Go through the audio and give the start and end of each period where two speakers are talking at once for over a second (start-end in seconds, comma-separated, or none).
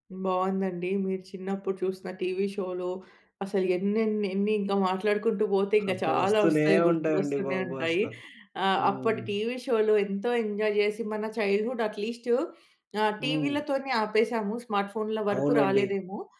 5.9-8.0